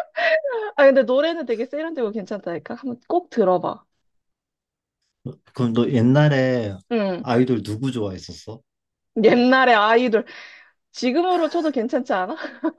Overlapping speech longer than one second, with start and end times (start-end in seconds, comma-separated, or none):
none